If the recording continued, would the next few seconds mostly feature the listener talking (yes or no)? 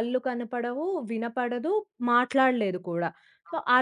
no